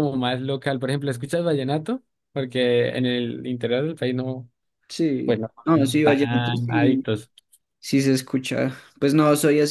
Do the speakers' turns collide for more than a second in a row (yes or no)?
yes